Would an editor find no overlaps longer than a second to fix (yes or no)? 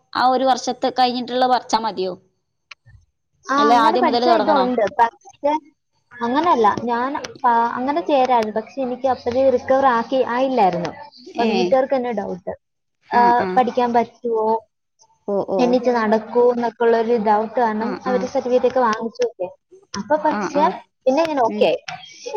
yes